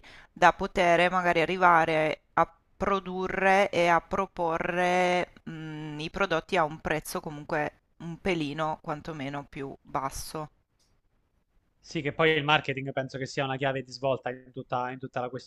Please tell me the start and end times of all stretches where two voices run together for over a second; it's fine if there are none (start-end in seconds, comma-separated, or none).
none